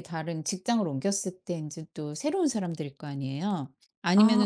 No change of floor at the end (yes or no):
yes